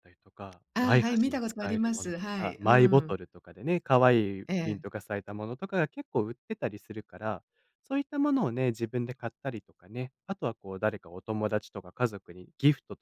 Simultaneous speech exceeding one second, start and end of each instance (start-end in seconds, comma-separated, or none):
0.7-3.2